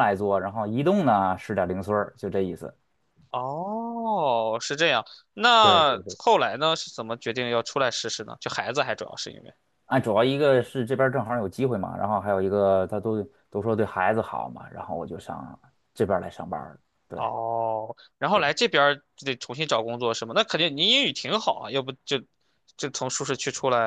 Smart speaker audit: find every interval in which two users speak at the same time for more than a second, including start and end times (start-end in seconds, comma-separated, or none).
none